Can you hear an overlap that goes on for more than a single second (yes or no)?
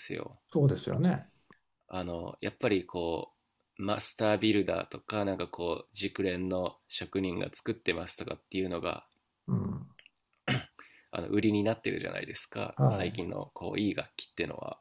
no